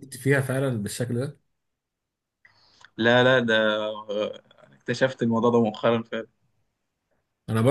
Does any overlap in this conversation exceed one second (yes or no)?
no